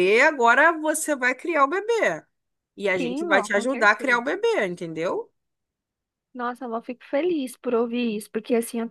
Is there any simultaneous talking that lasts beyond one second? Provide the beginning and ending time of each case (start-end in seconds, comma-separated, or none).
3.0-4.2